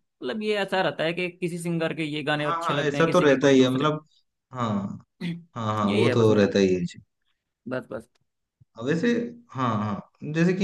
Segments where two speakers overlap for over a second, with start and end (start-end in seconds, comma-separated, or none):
2.4-3.9